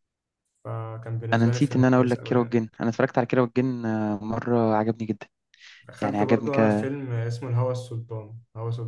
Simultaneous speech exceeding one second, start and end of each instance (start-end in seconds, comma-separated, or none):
1.3-2.6